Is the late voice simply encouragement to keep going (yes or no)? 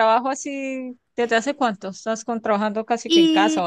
no